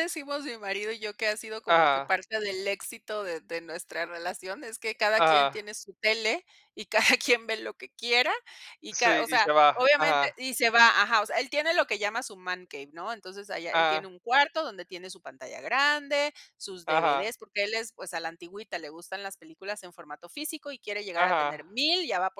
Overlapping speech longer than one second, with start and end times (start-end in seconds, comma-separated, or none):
8.9-10.4